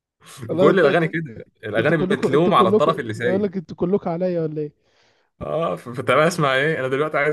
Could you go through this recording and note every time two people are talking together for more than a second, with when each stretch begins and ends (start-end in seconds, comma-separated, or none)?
1.8-3.5